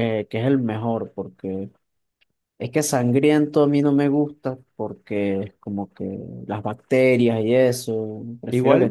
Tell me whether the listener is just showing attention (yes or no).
no